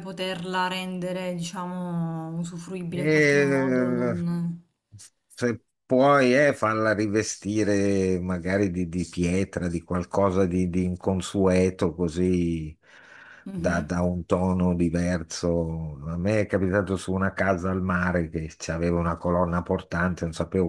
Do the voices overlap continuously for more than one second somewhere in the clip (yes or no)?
yes